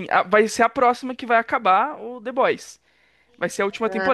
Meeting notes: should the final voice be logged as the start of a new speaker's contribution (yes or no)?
no